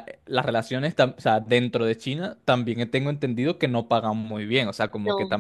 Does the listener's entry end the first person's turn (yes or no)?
no